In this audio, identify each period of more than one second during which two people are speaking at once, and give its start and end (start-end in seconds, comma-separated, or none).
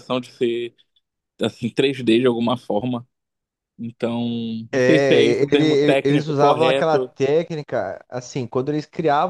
4.7-7.1